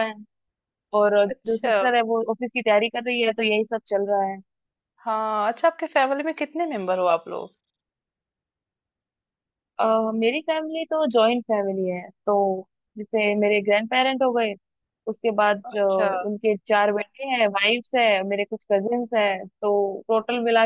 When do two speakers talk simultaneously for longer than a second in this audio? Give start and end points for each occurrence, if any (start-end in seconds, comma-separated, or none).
none